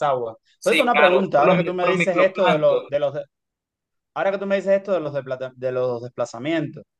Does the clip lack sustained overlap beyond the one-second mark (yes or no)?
no